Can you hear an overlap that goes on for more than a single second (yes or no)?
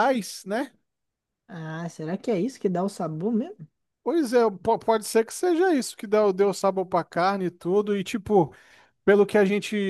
no